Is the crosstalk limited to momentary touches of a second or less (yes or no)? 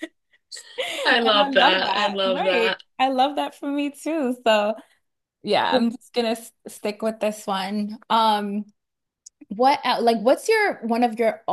no